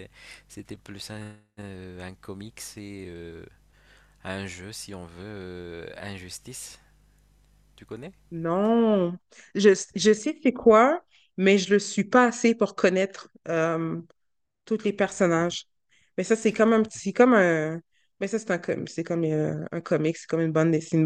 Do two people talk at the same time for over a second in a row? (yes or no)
no